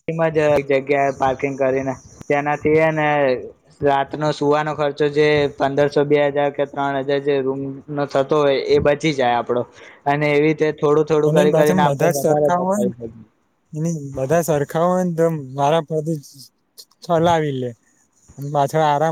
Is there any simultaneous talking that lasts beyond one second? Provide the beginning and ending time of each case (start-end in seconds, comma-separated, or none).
11.3-12.9